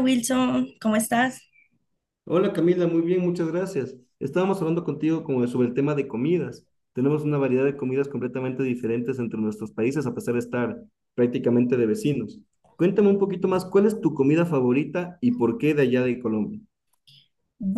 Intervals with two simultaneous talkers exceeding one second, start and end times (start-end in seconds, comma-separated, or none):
none